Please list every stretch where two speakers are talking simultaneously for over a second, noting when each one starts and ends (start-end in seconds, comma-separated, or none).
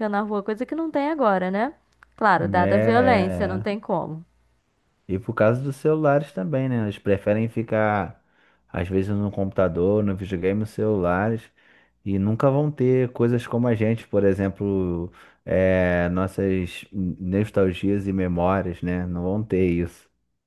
2.6-3.8